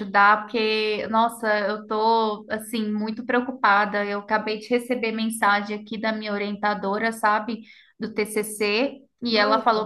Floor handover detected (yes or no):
no